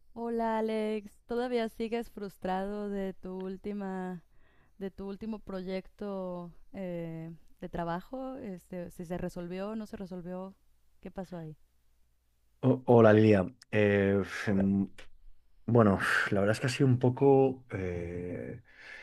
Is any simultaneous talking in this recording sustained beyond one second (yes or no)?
no